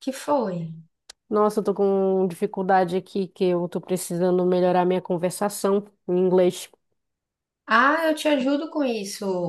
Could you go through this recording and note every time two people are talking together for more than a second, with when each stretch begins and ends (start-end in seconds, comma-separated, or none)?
none